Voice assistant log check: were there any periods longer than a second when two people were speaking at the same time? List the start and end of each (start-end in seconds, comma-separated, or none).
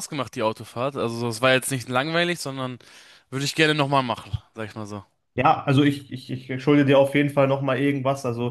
none